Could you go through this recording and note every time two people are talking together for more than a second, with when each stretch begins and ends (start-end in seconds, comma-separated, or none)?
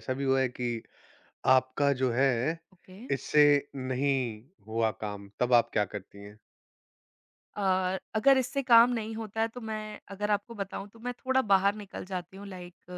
none